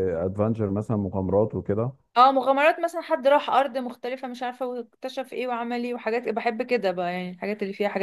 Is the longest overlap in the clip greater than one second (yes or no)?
no